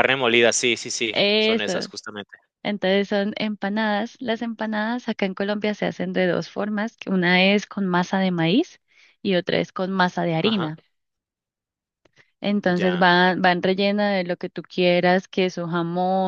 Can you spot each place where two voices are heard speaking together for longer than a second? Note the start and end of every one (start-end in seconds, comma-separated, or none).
none